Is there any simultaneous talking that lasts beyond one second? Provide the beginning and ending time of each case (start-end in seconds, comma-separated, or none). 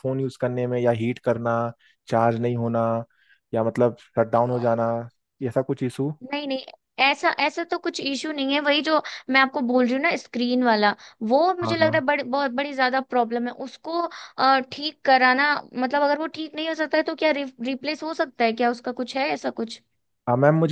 none